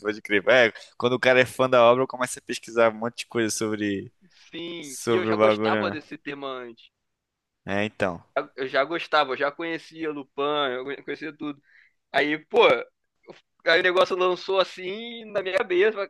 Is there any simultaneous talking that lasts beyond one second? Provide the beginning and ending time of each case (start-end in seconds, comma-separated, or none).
4.8-6.0